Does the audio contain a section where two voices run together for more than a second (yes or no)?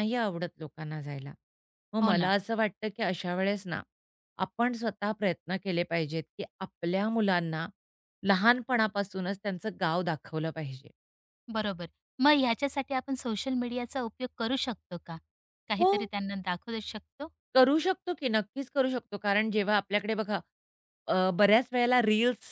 no